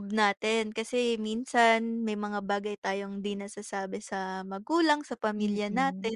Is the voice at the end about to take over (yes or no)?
yes